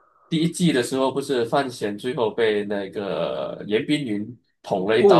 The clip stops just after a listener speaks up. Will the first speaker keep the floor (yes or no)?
no